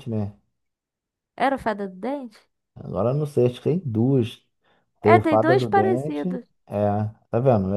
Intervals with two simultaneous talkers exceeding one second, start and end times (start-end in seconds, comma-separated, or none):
5.0-6.3